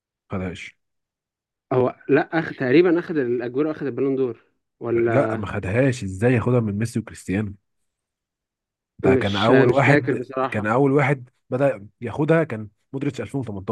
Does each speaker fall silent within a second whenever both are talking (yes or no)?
no